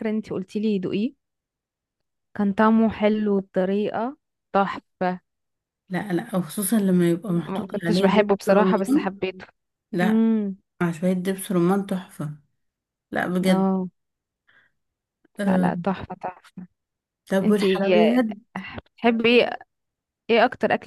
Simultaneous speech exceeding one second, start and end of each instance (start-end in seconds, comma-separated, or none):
7.3-9.1